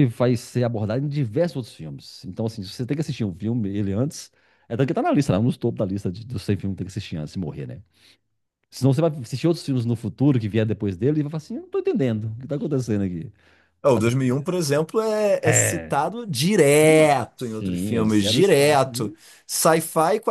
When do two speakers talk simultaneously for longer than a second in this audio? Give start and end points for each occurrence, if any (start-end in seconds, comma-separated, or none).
16.8-19.2